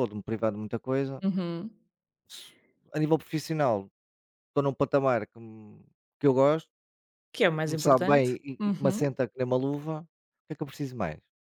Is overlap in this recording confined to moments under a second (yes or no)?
no